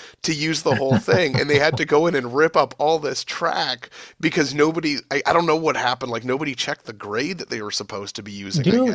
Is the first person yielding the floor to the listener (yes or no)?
yes